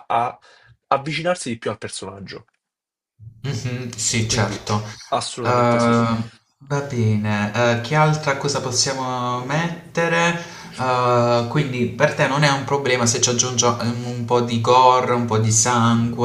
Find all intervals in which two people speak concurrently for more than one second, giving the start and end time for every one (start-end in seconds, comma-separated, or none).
none